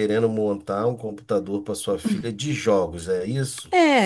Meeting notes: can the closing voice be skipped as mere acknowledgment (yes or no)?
no